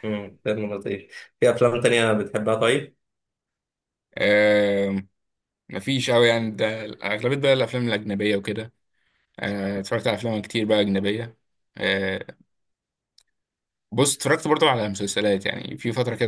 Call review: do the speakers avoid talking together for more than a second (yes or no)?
yes